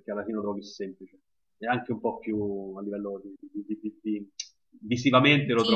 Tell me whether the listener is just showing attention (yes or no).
no